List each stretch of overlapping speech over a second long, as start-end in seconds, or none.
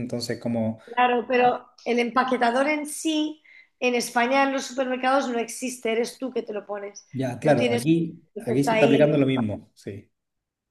7.1-9.2